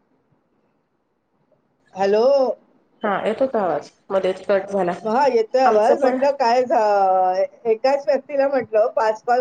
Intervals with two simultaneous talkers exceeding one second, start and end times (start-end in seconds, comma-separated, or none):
none